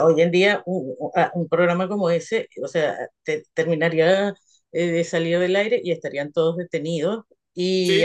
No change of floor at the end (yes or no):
yes